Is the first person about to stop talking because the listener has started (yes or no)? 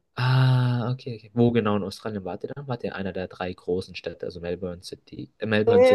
yes